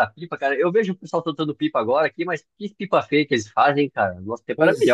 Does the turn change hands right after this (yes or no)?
yes